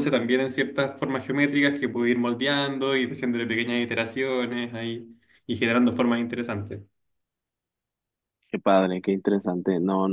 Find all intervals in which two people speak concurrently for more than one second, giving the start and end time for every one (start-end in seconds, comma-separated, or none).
none